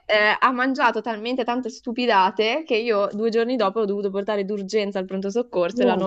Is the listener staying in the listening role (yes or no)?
yes